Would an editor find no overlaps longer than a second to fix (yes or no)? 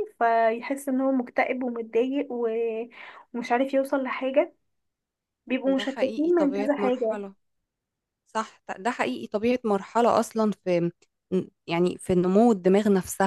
no